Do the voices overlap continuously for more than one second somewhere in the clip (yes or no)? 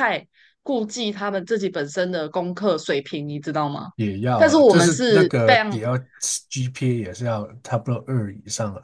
yes